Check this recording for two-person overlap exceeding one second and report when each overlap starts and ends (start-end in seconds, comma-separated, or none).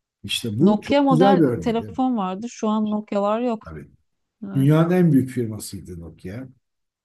0.6-1.9